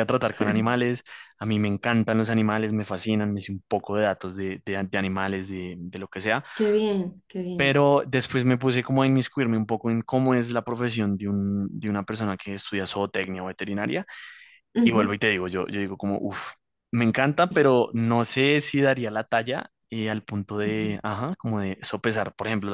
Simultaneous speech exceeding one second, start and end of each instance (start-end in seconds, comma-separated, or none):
none